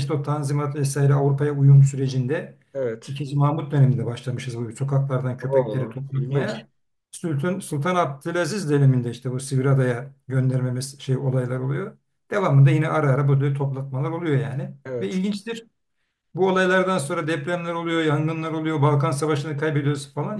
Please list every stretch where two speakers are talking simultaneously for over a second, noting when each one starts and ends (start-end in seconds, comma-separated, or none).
5.4-6.6